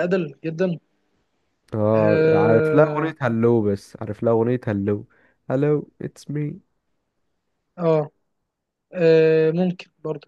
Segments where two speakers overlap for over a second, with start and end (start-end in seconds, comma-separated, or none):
1.9-3.1